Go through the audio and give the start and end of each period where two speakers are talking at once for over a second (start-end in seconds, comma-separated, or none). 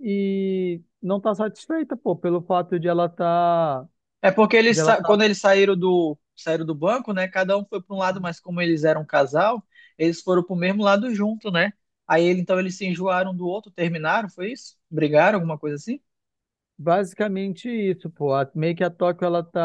none